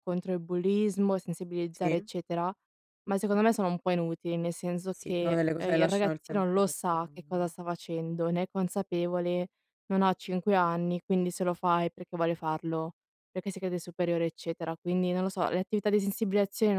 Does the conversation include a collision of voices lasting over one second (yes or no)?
yes